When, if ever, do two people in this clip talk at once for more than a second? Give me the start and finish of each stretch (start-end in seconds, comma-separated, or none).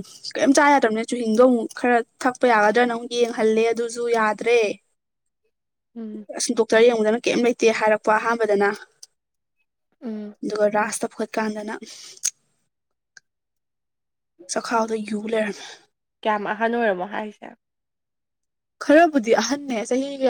none